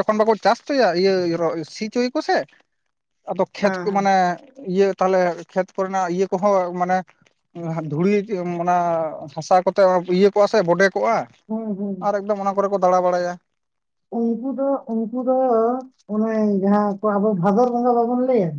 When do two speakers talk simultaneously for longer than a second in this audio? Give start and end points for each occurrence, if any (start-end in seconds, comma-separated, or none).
none